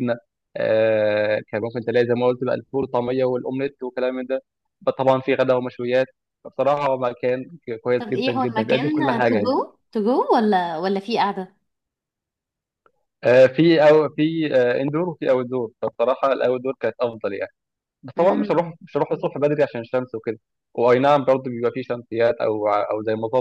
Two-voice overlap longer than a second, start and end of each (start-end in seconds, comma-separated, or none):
8.0-9.6